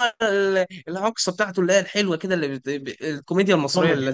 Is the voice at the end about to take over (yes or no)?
yes